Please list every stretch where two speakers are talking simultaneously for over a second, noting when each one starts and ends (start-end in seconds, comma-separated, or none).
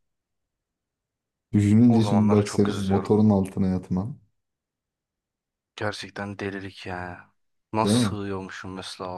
1.9-3.2